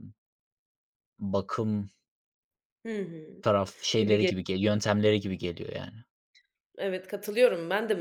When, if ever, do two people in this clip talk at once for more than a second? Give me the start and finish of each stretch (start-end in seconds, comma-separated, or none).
none